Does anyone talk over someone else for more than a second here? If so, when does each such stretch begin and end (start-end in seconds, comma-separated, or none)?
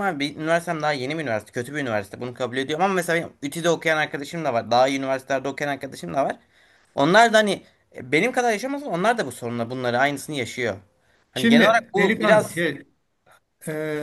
11.3-12.6